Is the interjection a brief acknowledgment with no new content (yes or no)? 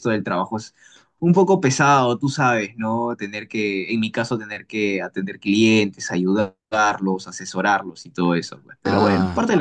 no